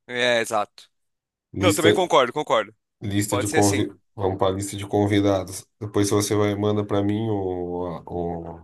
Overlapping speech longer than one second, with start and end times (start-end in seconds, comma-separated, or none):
none